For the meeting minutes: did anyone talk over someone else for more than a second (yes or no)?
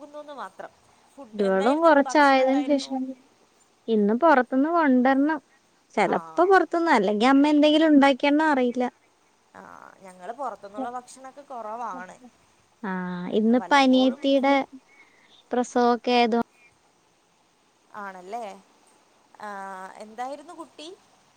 yes